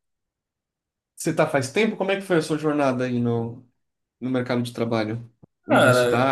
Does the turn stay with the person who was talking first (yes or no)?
no